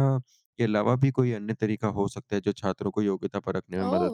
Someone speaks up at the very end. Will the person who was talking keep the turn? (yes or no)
yes